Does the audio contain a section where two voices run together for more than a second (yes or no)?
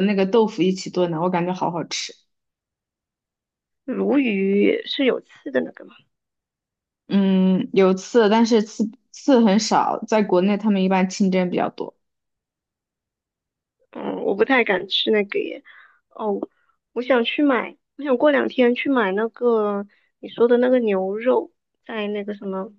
no